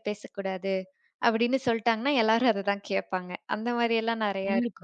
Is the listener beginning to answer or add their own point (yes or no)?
no